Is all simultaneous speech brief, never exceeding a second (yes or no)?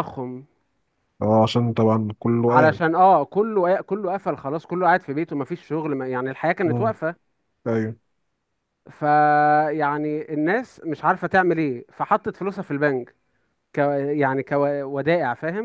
yes